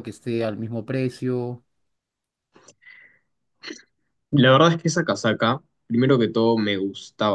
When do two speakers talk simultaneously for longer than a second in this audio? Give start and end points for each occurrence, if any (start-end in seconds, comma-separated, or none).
none